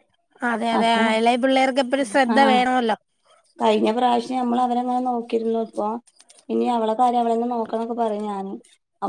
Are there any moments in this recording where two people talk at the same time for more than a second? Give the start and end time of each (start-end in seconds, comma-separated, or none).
none